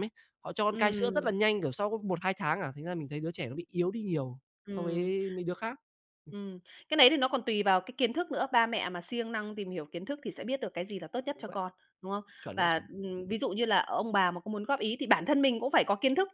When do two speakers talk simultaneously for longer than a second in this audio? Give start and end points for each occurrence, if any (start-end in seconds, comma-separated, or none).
none